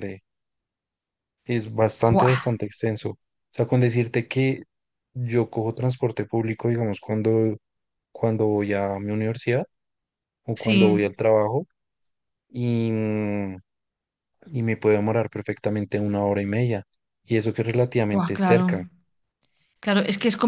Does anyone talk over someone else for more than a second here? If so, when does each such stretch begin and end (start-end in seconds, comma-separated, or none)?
none